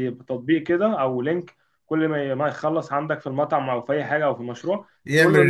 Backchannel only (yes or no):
yes